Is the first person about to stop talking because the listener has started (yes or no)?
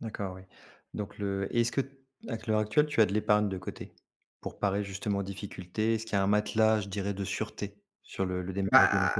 yes